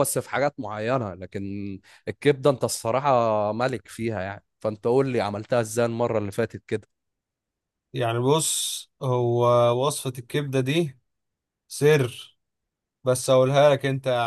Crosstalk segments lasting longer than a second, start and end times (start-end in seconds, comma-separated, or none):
none